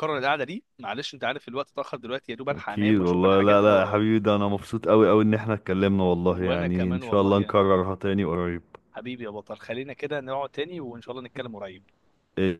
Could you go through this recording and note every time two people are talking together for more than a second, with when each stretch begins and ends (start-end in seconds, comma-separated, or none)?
2.5-4.0, 6.3-7.6